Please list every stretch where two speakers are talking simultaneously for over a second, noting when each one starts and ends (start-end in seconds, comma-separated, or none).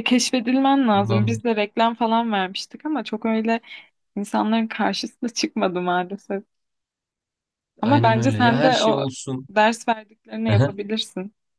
7.8-9.1